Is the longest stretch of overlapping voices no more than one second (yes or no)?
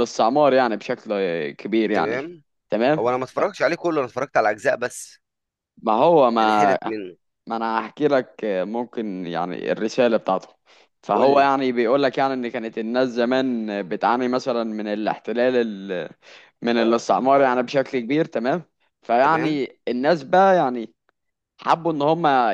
yes